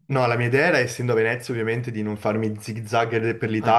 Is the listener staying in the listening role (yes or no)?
yes